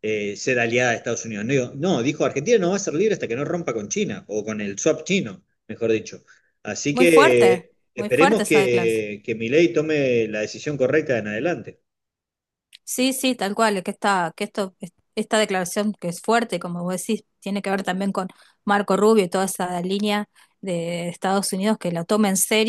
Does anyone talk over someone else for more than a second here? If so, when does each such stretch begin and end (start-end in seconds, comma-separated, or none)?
6.9-9.1